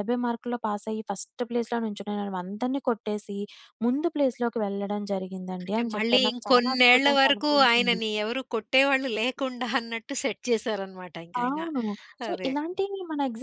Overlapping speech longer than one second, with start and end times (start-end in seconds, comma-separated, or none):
5.7-8.0